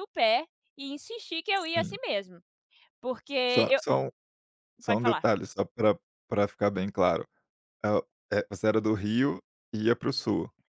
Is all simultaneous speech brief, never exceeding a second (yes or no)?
yes